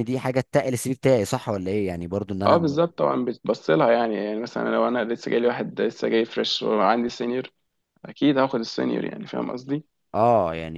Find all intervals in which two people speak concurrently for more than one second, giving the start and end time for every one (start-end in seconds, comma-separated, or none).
none